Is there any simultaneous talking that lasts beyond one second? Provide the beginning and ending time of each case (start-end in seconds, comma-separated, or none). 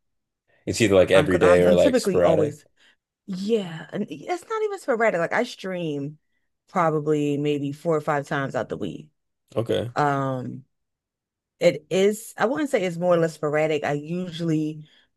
1.1-2.6